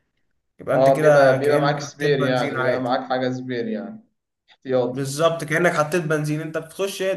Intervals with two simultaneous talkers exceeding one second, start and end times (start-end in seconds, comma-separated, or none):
0.7-2.9